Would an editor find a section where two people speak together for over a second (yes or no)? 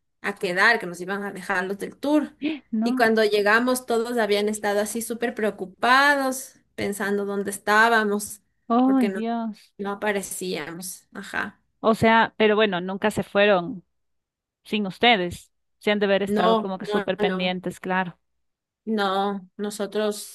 yes